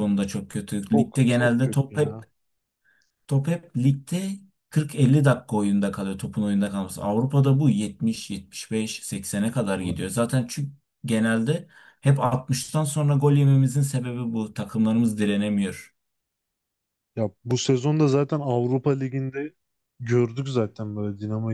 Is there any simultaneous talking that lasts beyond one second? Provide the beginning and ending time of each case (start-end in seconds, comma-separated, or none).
0.9-2.2